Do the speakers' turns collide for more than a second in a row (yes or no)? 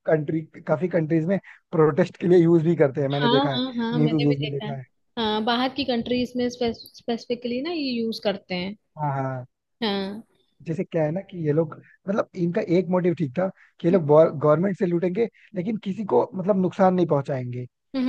yes